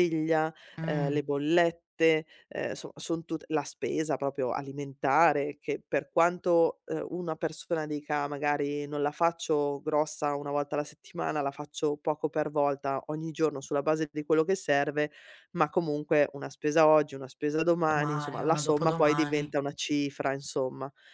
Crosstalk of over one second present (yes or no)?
yes